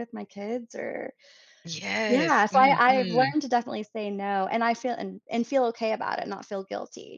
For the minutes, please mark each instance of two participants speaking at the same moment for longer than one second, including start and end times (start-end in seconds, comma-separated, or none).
2.1-3.3